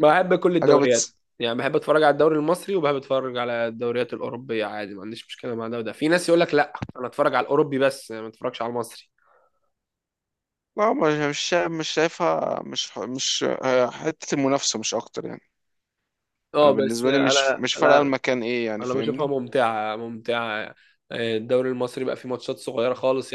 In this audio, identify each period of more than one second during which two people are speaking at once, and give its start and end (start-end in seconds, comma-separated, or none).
16.6-18.1